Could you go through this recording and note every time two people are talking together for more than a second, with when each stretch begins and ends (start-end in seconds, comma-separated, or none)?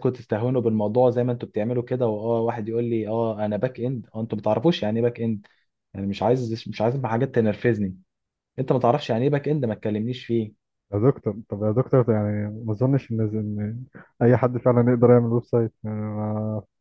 none